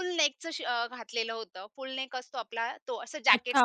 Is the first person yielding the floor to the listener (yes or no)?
yes